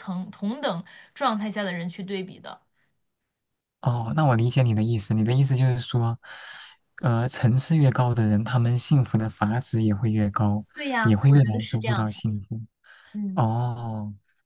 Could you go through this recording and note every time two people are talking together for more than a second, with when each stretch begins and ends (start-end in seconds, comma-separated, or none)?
11.0-12.2